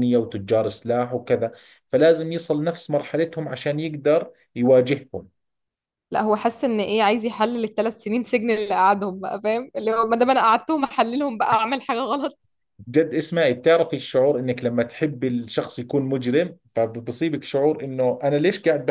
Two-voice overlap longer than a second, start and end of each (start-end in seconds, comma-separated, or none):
none